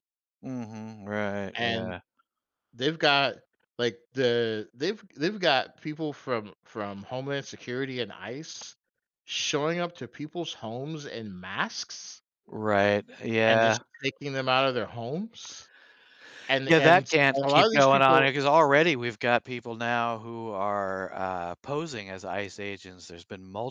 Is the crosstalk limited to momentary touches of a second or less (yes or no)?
no